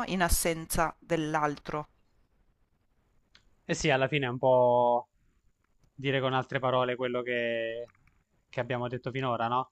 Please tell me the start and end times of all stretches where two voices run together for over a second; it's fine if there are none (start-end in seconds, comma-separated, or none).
none